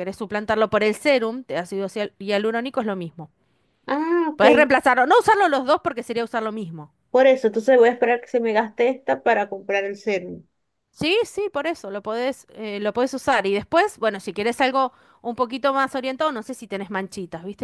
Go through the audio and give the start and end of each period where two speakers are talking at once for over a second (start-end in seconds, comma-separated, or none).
none